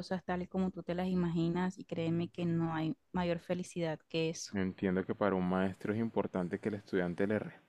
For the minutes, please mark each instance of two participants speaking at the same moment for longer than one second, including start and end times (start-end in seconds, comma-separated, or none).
none